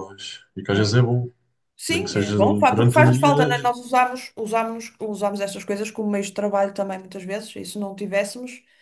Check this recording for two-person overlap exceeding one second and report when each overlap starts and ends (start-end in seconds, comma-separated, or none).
1.9-3.7